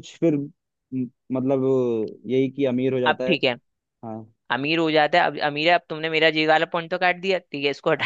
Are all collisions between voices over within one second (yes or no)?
yes